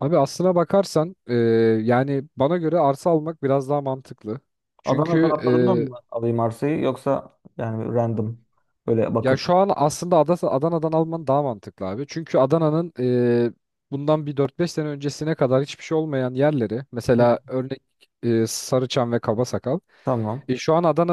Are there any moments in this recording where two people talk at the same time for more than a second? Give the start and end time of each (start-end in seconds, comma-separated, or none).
none